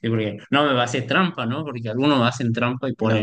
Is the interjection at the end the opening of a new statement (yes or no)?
no